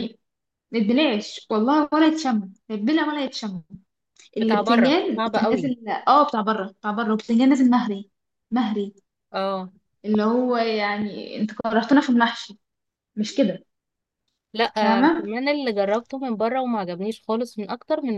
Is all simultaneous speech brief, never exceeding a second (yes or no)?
no